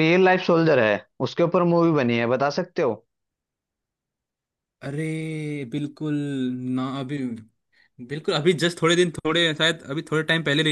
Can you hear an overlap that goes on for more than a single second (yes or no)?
no